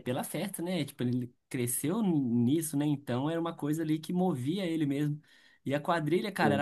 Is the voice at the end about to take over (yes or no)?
no